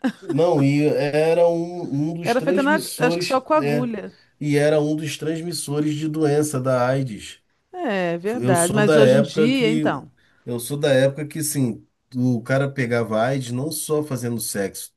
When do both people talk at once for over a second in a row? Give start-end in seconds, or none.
2.2-3.9, 8.3-9.8